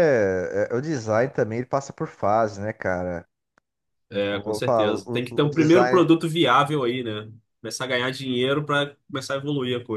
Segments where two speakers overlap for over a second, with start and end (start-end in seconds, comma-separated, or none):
4.3-6.1